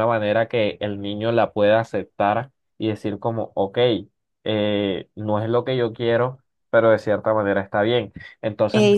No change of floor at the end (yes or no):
yes